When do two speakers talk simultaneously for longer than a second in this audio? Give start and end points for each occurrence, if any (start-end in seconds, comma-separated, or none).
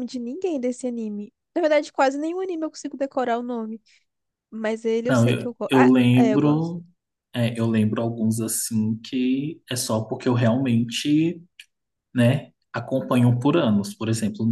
5.1-6.7